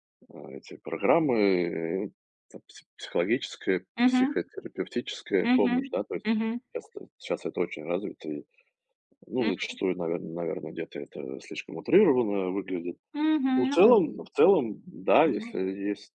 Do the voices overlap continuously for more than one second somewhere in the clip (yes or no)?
no